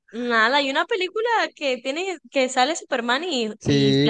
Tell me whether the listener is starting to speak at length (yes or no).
yes